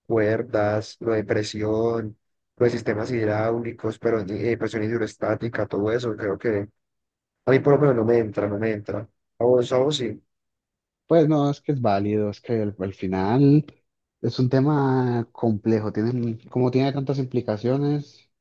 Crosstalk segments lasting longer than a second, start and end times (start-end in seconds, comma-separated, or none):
none